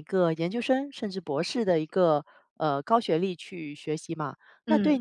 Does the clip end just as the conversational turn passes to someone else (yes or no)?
no